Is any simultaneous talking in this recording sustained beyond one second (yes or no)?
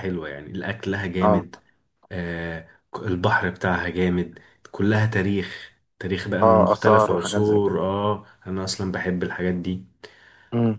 yes